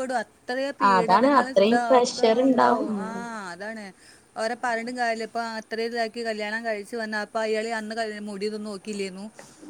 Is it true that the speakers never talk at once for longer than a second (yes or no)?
no